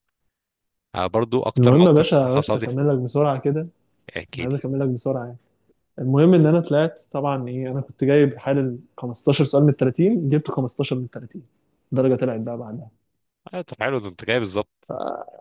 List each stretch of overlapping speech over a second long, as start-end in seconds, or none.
1.6-2.9